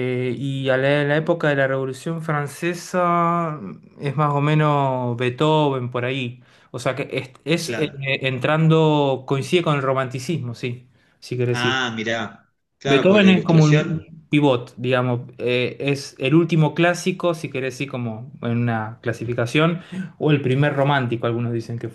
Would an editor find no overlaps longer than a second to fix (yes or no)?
no